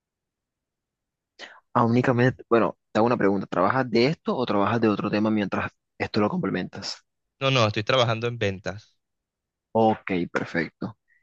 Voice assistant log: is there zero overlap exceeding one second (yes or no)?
yes